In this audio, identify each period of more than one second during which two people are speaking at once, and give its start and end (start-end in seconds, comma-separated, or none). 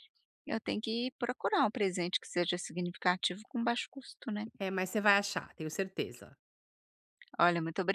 none